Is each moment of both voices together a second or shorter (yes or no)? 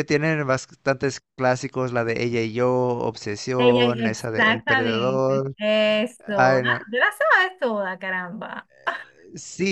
no